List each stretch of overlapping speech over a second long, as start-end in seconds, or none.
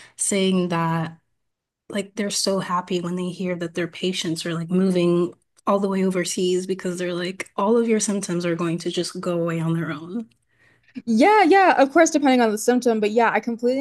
none